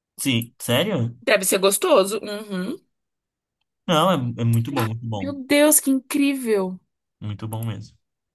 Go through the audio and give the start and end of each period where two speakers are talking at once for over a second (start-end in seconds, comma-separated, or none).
none